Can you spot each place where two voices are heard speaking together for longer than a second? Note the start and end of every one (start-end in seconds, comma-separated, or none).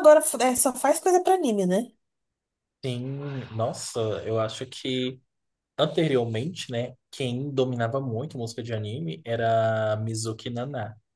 none